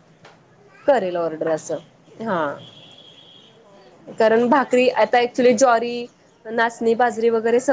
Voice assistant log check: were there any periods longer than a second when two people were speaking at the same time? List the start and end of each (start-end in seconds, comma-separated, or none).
4.2-5.4